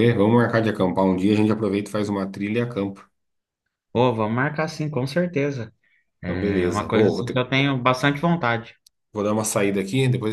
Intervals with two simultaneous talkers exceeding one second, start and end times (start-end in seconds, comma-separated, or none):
6.2-7.4